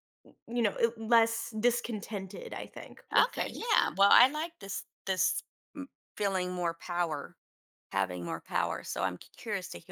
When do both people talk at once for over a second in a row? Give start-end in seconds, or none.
none